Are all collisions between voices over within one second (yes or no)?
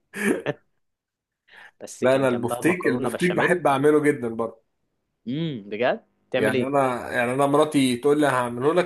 no